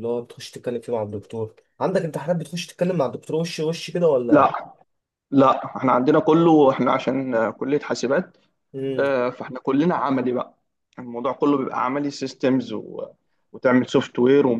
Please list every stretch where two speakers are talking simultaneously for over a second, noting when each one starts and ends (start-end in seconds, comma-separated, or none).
none